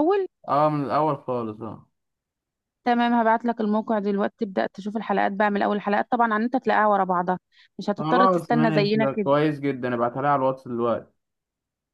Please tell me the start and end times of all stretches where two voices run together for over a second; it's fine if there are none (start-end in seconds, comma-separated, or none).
8.0-9.3